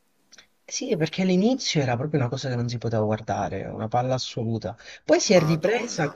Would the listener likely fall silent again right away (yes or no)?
yes